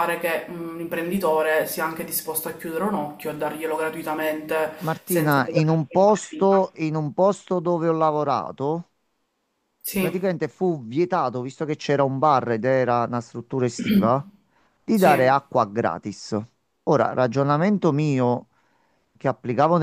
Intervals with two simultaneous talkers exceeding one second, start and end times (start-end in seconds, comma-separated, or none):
4.8-6.2